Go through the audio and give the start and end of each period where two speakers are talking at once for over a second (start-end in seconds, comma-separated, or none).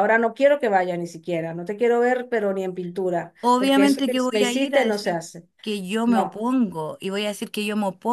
3.4-5.2